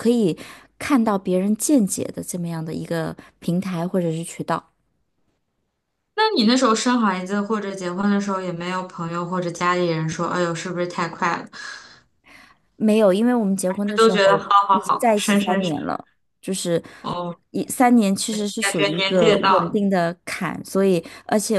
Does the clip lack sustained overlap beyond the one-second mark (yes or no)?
no